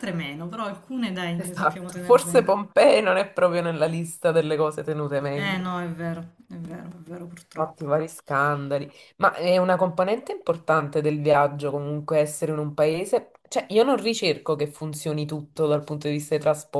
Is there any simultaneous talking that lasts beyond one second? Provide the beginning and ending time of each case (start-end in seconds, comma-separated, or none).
1.4-2.6